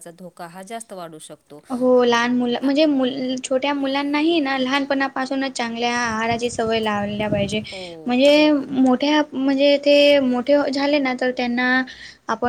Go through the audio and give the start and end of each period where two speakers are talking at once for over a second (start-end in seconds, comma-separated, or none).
none